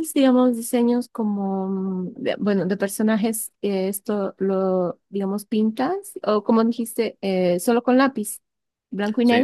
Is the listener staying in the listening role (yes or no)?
no